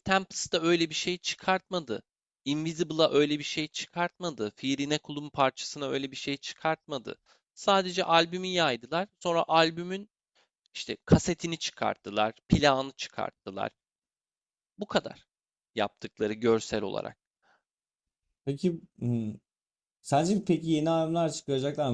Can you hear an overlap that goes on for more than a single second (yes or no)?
no